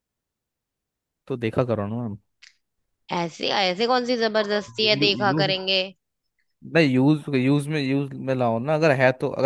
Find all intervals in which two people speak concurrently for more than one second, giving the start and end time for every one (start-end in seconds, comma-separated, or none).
none